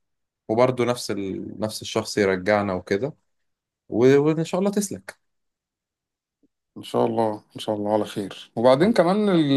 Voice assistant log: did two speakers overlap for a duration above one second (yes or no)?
no